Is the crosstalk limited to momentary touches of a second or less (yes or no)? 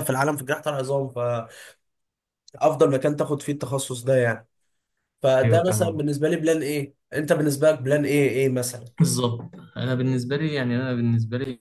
yes